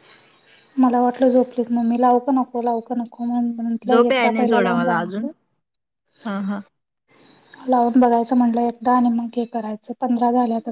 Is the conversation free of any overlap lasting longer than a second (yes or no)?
no